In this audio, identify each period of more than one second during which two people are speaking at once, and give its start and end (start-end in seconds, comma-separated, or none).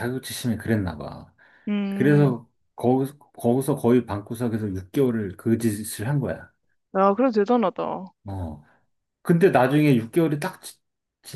none